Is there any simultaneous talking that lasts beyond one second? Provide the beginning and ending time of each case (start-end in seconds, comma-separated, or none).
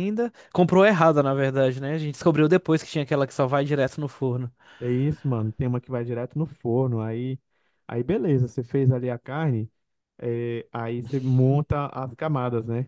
none